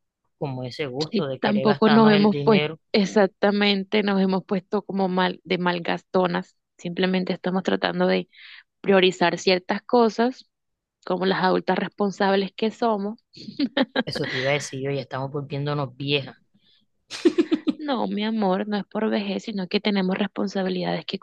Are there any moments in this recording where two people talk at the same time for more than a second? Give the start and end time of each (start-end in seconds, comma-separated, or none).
1.1-2.8